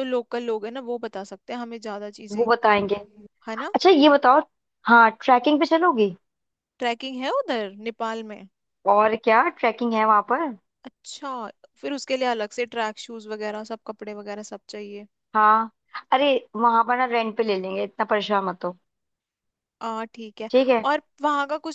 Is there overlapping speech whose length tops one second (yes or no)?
no